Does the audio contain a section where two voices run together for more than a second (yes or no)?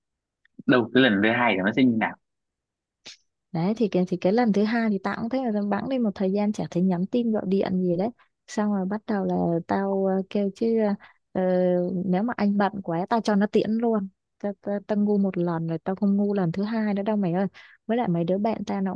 no